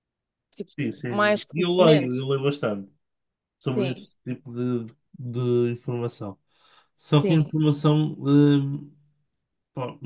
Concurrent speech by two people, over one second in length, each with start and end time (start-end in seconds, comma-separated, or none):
0.6-2.2